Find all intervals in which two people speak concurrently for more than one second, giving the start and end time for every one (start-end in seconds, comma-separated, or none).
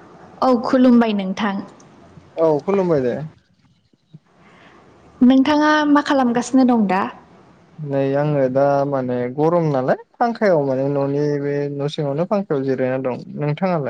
none